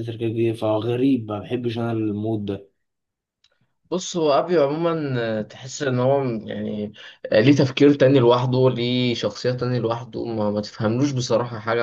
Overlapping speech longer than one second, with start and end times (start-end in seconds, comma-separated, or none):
none